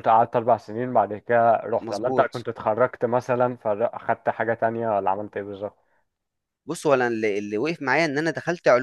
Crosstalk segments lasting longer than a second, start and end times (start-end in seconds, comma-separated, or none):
none